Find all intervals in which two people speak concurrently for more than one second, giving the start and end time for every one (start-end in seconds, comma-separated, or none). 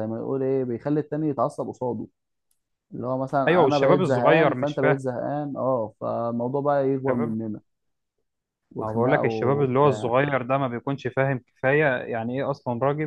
3.5-5.0, 8.8-10.1